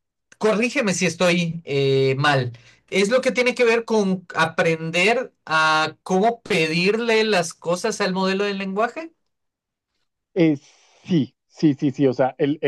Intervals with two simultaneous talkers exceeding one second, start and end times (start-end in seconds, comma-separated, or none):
none